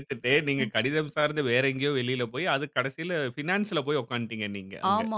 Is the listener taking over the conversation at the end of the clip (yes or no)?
yes